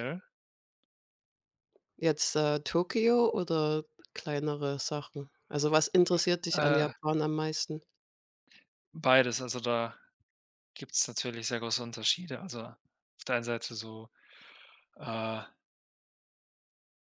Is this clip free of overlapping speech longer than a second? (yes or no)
yes